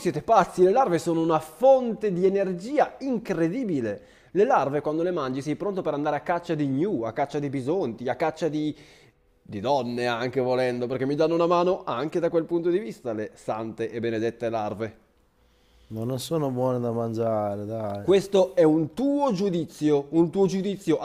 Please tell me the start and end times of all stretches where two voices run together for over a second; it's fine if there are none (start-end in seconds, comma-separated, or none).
none